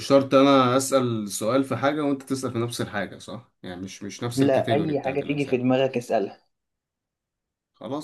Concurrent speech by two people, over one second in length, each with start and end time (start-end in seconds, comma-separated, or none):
4.3-5.8